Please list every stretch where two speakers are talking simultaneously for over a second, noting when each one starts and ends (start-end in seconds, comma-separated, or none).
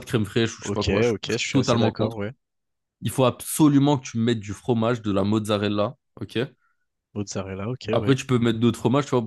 0.6-2.2